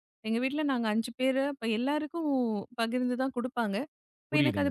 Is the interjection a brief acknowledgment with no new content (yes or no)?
yes